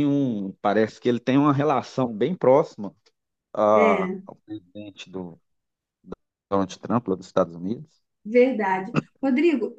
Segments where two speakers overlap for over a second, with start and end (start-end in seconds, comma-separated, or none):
none